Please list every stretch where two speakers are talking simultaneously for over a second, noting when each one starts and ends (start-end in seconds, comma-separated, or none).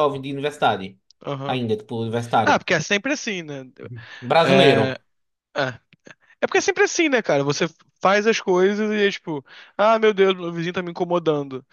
none